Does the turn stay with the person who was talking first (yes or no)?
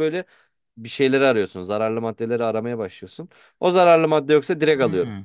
no